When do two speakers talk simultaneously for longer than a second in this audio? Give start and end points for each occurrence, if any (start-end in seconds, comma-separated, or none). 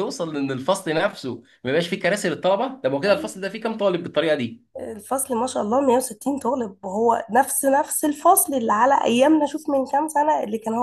none